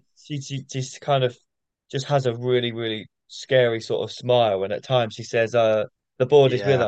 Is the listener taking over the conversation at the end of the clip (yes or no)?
no